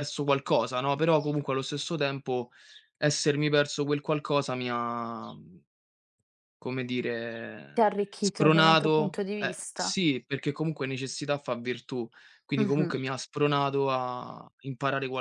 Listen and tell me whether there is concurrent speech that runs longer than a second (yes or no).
yes